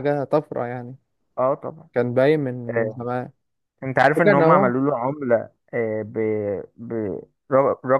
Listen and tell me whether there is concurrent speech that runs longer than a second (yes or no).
no